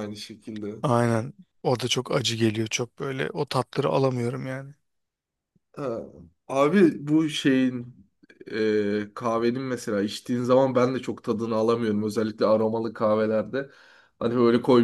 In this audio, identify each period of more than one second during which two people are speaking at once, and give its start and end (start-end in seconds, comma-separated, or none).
none